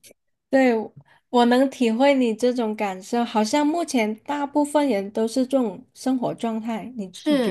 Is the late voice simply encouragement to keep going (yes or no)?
no